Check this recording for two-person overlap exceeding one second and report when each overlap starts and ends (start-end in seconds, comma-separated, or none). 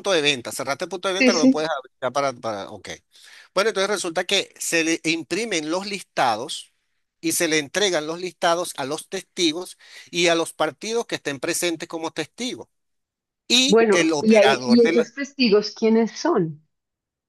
13.7-15.1